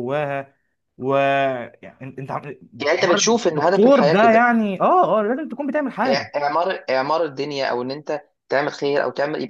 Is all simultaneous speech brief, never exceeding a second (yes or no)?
no